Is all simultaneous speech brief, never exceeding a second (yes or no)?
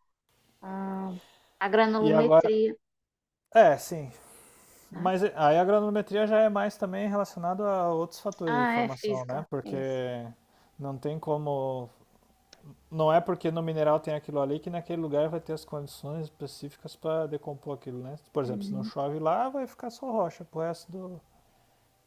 no